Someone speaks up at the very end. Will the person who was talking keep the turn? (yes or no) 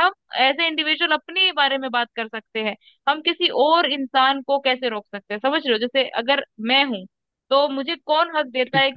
yes